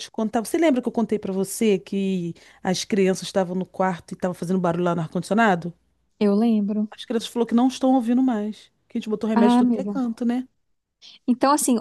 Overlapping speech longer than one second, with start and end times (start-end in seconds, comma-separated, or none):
none